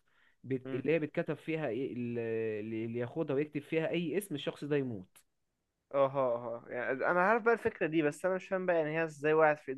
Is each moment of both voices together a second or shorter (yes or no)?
yes